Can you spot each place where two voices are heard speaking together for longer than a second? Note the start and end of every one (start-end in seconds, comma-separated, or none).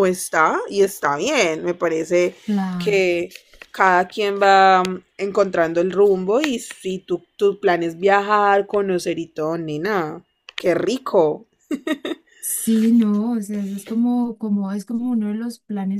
none